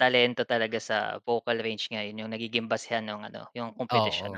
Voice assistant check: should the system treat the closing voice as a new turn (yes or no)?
no